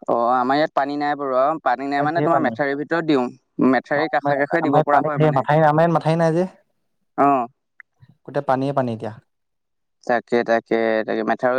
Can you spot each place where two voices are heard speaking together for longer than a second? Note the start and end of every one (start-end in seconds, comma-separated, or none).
none